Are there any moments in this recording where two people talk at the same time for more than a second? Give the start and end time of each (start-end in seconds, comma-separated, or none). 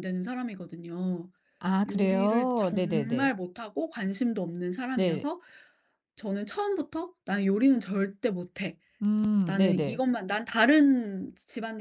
1.9-3.3